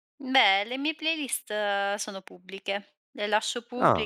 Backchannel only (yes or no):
yes